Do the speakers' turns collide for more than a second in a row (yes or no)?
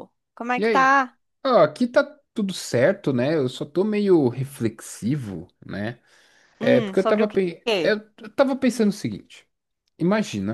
yes